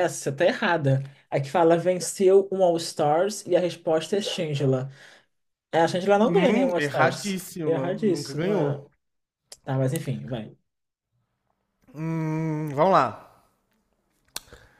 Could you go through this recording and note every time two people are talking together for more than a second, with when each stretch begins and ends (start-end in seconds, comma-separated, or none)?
6.2-8.9